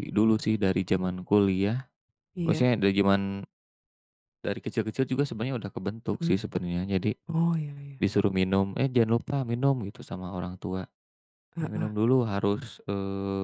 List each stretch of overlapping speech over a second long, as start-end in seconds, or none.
none